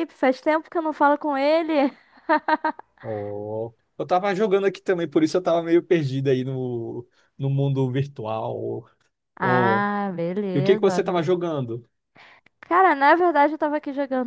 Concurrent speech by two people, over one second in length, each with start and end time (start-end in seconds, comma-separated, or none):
none